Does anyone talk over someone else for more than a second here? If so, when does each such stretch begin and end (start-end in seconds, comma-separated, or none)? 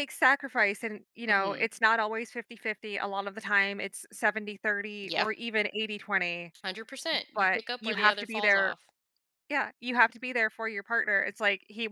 7.3-8.8